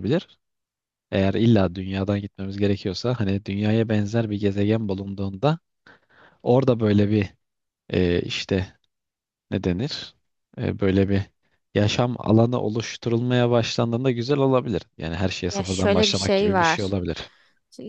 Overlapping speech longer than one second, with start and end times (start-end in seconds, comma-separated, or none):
15.5-16.9